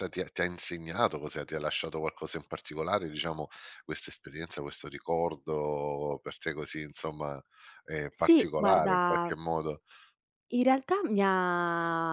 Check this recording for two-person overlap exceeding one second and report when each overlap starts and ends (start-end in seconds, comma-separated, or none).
8.1-9.3